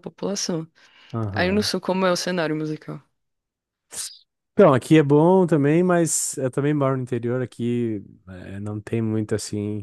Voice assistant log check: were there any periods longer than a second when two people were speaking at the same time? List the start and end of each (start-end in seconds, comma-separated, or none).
none